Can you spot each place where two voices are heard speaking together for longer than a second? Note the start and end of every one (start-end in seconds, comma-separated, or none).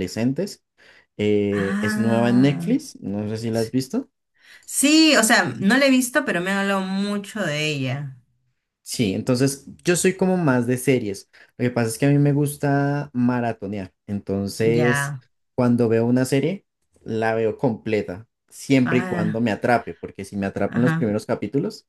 1.5-2.8